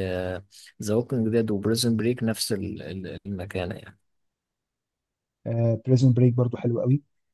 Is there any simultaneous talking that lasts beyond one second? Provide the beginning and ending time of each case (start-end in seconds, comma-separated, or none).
none